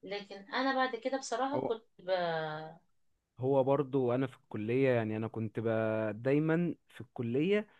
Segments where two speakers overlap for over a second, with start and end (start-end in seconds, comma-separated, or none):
none